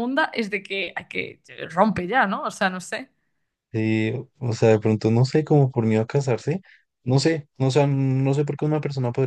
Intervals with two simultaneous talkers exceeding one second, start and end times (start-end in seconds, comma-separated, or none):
none